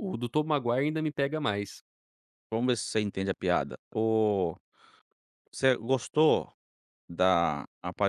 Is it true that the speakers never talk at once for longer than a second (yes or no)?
yes